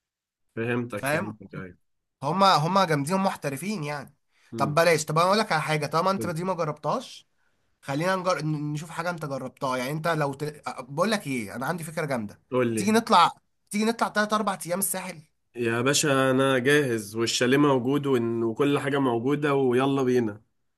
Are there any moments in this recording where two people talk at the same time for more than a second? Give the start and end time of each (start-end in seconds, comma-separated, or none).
none